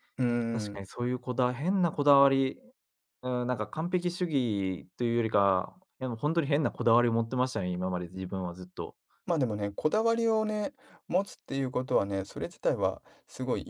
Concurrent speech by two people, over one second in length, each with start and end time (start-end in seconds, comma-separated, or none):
none